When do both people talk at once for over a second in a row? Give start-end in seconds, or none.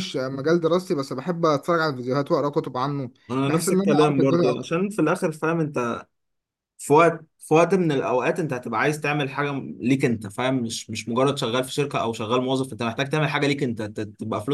3.3-4.5